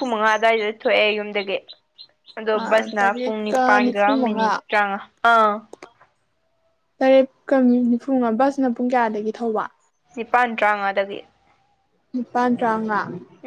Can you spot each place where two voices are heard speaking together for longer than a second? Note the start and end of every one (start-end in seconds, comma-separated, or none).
3.0-4.6